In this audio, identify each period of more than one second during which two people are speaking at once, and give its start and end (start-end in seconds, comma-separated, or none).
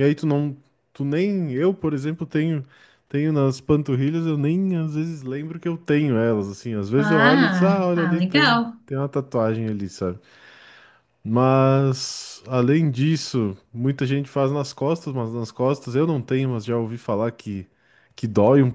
7.0-8.8